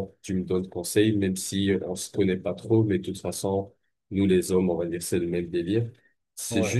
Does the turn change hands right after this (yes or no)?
no